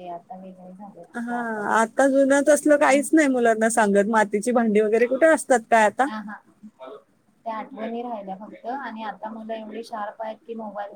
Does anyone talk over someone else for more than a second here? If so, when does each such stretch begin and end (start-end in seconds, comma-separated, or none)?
none